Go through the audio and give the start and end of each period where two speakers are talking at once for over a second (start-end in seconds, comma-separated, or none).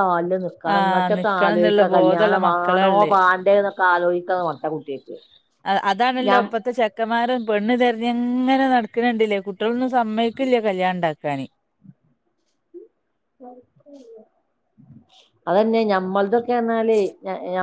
0.7-3.1